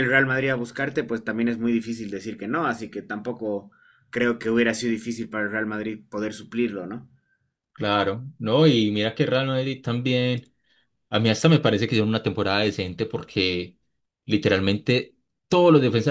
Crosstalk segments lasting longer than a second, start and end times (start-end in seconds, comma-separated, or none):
none